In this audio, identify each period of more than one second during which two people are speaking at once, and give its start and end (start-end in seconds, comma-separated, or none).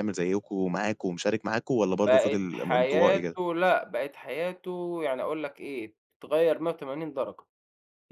2.1-3.4